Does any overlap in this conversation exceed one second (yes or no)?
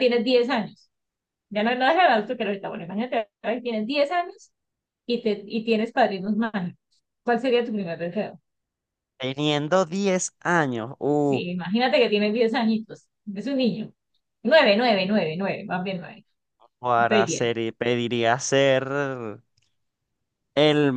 no